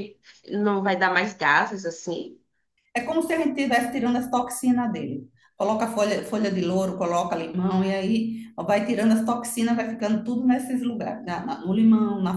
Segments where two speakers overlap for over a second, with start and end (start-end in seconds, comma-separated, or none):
none